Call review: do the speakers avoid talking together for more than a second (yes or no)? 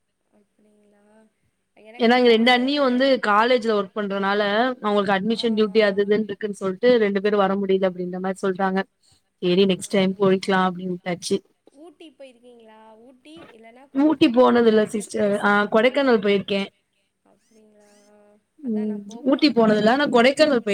no